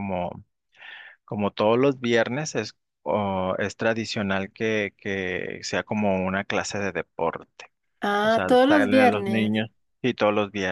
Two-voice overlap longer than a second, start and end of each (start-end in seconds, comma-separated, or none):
8.2-9.5